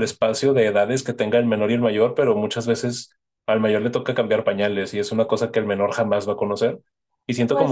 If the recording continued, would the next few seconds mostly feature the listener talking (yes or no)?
no